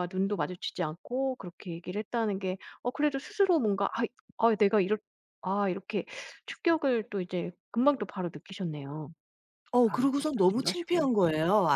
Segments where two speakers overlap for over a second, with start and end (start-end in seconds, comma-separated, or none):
9.8-11.1